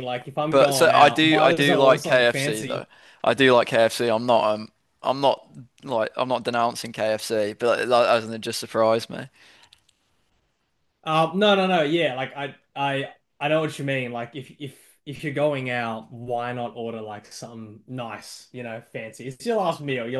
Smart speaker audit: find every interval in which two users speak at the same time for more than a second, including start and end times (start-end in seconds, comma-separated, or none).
0.5-2.9